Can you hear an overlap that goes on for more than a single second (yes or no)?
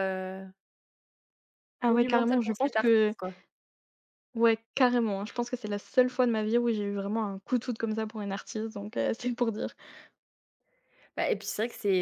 yes